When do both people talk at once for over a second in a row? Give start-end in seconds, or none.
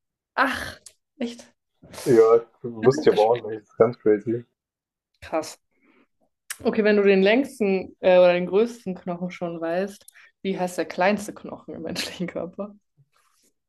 2.0-3.6